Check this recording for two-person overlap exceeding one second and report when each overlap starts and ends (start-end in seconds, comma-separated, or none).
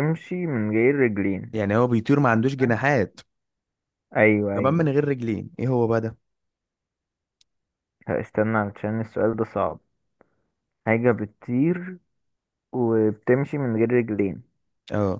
none